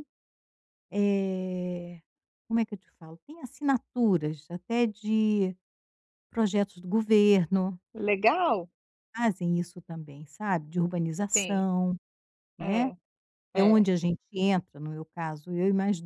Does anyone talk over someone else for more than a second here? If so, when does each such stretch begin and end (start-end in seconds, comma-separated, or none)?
none